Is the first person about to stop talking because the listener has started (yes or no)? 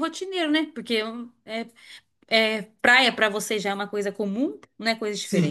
yes